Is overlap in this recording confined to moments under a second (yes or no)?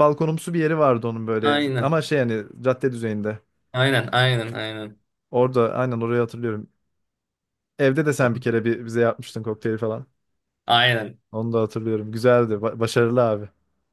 yes